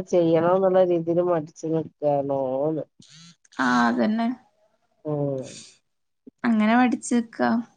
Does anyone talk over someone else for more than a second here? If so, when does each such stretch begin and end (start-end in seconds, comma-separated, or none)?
none